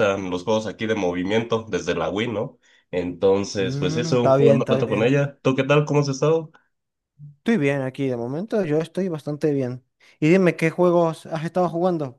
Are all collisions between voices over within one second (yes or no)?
no